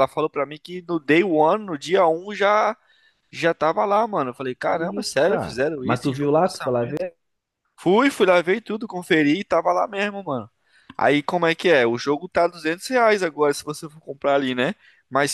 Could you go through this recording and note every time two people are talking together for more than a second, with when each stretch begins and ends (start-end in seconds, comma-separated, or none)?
4.7-7.0